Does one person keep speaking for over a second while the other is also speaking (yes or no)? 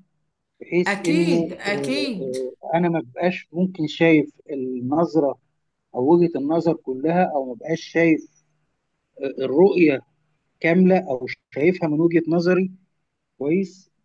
yes